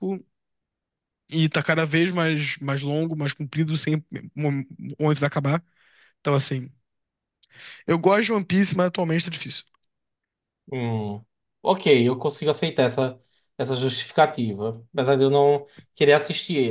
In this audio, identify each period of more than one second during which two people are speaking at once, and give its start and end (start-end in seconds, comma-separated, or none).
none